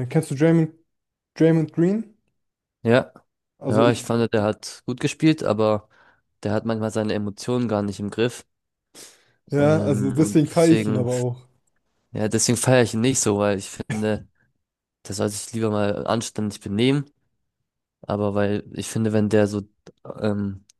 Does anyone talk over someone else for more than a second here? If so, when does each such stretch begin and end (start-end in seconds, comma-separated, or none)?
9.6-11.1